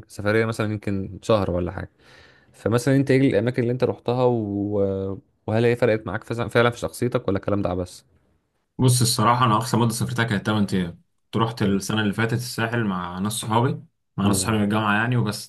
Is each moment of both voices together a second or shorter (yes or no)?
yes